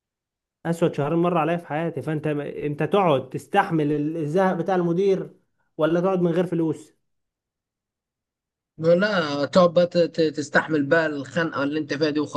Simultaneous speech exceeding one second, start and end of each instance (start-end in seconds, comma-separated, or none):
none